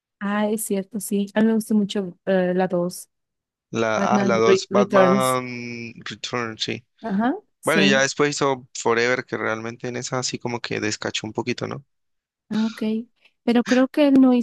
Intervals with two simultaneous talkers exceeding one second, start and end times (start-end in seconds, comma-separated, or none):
3.9-5.4